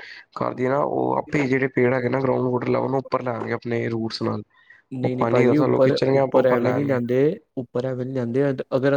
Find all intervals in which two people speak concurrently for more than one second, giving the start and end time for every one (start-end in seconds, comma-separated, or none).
5.0-7.0